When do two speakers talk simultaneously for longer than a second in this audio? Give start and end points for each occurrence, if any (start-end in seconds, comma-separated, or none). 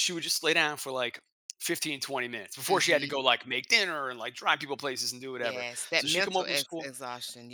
5.4-6.9